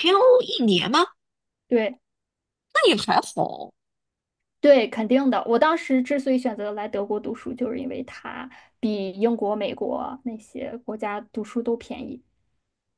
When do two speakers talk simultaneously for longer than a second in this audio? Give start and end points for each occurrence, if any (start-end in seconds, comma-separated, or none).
none